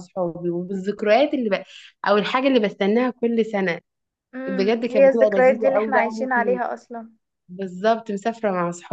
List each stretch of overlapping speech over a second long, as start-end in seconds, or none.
4.5-6.1